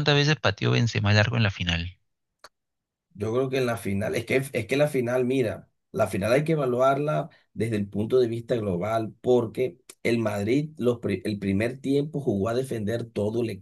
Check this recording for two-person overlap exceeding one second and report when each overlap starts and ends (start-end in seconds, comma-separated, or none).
none